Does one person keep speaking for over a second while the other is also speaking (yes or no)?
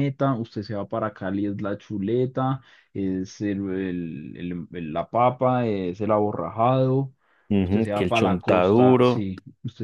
yes